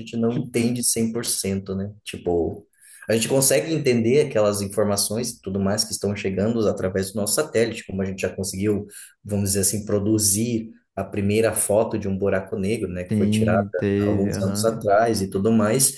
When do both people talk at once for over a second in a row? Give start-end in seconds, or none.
13.1-14.8